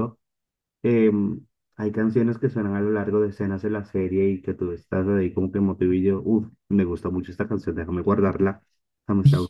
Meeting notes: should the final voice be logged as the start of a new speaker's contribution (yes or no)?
yes